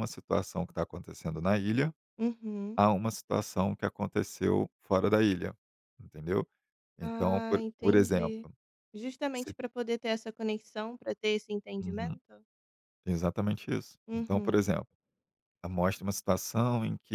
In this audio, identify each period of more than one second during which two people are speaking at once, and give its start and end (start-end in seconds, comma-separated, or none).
7.0-8.3